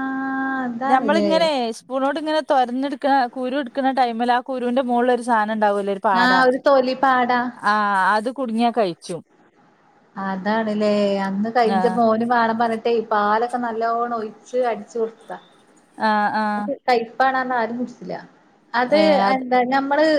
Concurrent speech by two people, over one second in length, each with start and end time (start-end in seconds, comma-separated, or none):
none